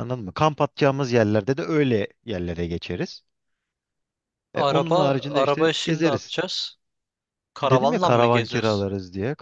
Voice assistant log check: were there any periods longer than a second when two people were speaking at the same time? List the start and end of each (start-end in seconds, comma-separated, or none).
4.5-6.4, 7.6-8.9